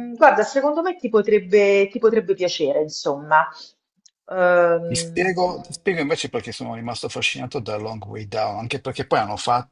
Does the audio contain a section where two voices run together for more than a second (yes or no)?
no